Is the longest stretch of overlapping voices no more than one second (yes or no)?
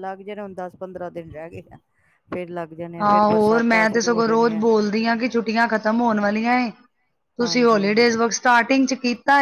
no